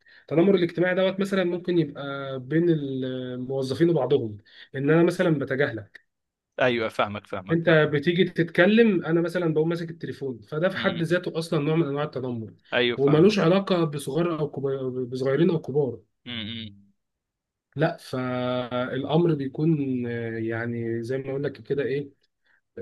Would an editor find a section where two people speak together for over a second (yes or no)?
no